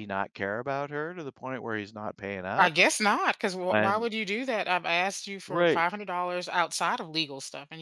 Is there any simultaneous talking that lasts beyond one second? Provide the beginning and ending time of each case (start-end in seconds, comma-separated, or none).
none